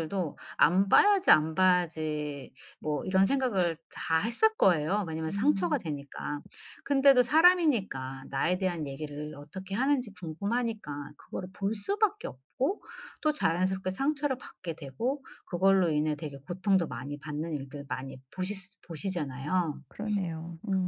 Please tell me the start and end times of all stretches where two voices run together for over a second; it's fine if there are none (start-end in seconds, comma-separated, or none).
none